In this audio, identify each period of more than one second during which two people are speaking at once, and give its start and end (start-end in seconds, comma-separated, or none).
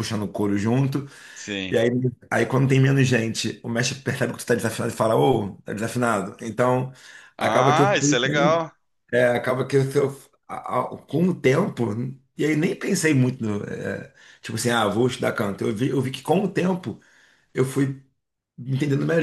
7.4-8.6